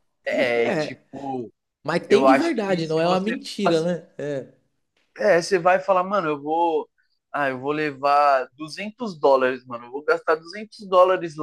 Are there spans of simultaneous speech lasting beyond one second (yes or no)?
yes